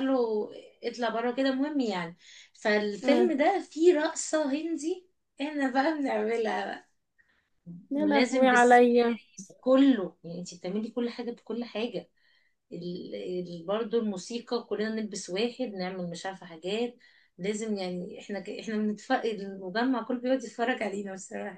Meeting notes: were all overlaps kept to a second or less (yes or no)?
no